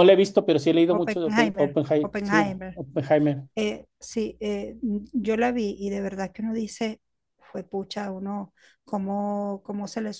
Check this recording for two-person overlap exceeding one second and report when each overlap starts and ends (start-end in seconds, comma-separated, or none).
0.9-2.8